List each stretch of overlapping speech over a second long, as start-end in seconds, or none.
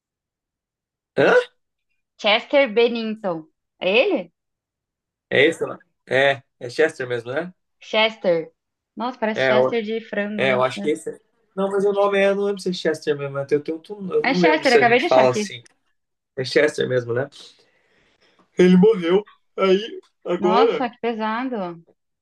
14.2-15.4